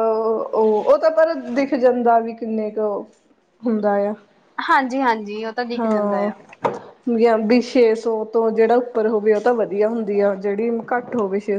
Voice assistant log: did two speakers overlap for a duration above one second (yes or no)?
no